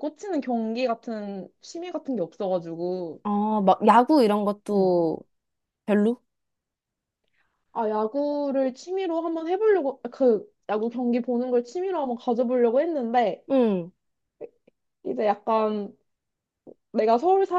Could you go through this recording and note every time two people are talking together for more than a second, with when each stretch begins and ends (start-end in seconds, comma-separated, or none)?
none